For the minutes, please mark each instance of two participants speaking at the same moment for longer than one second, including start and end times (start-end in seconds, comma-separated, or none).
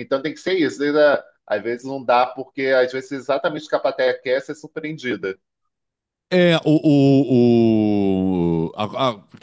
none